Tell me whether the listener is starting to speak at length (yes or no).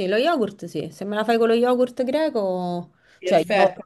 yes